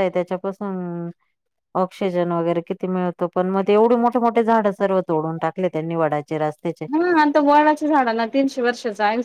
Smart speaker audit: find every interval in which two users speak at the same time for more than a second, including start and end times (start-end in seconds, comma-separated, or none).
none